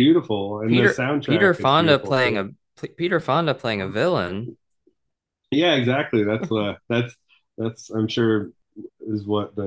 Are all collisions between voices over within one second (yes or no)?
no